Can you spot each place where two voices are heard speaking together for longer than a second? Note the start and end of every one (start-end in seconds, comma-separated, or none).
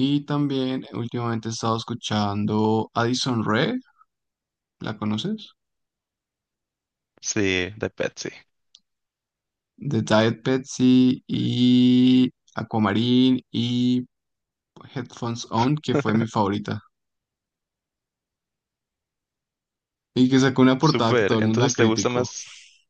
20.8-22.3